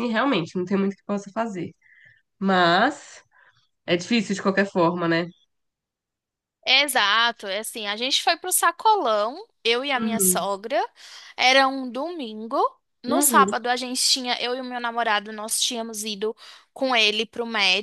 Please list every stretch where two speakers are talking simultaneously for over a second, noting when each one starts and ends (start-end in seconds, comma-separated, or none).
none